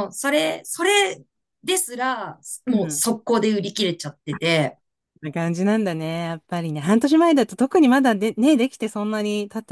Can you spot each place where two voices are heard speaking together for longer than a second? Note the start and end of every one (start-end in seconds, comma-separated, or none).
none